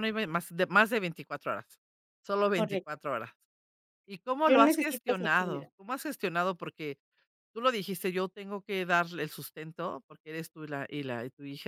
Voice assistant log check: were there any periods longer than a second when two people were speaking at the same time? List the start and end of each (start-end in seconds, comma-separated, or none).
4.5-5.7